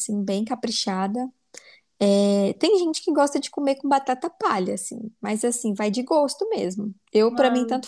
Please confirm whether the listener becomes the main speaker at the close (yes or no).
no